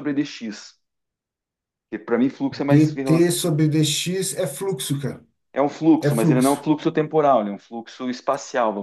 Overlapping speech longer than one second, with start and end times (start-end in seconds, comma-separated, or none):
none